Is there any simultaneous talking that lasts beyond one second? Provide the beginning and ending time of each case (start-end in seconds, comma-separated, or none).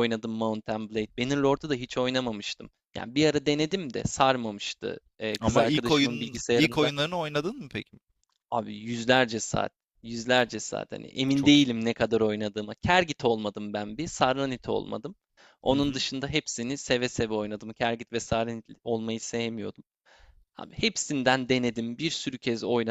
5.4-6.9